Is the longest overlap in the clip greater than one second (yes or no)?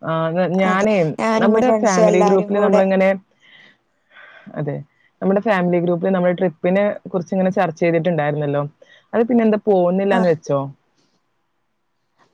yes